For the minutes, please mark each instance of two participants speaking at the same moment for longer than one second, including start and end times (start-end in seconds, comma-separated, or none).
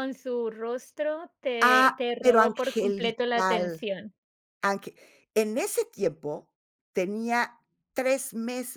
1.6-3.8